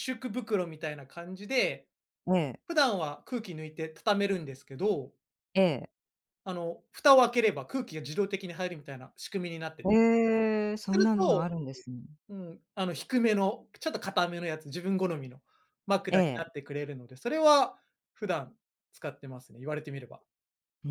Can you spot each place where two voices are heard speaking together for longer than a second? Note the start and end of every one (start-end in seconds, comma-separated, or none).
none